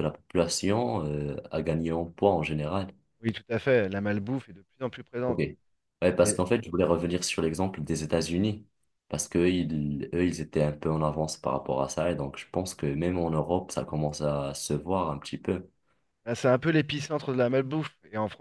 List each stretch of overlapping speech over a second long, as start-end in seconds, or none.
none